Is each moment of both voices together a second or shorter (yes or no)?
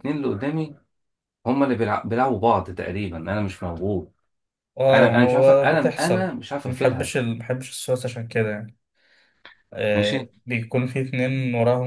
no